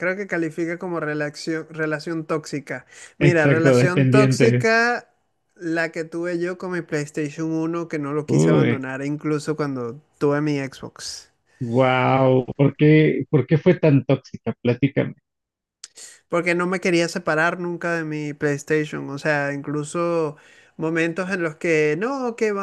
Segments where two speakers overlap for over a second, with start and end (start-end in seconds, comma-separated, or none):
3.2-4.7